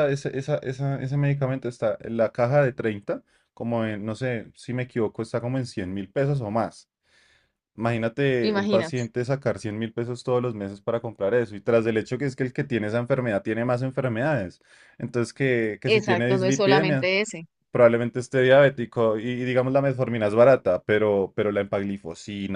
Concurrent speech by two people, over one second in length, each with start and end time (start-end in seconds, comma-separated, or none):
15.9-17.1